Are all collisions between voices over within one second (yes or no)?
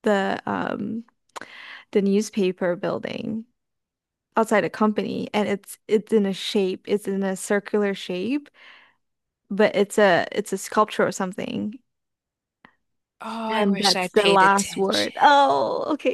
no